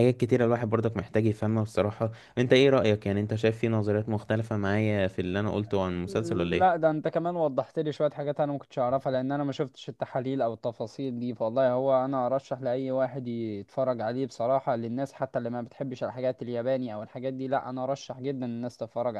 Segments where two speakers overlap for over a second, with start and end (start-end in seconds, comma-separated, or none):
none